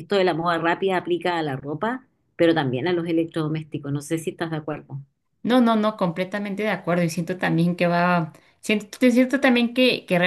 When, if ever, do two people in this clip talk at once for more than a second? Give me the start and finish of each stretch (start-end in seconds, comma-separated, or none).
none